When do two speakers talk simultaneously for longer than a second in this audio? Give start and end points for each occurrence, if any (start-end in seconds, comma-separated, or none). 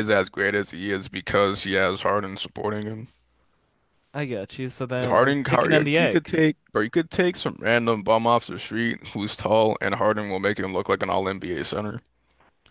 5.0-6.4